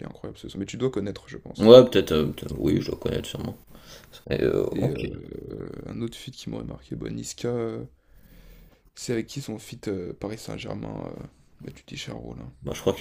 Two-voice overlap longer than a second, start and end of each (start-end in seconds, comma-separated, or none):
none